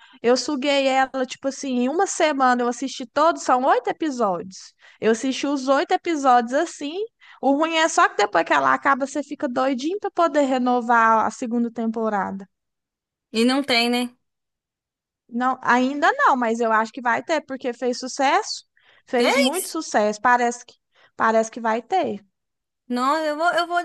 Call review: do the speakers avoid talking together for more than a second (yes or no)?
yes